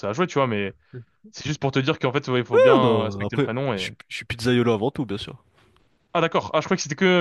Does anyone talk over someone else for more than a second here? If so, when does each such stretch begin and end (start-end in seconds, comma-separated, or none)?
2.5-3.9